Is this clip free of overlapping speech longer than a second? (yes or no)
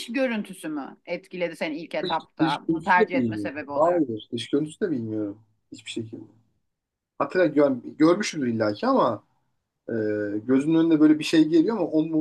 no